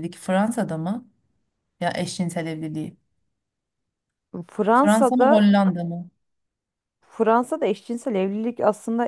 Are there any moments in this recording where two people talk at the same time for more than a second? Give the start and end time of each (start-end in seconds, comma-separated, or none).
none